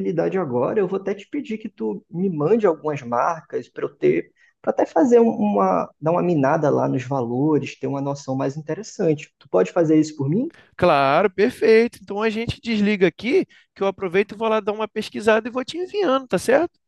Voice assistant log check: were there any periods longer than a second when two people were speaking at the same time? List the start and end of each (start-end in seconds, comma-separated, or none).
none